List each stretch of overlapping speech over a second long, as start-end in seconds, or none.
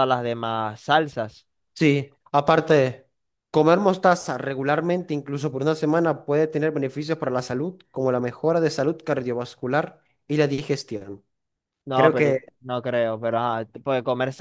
none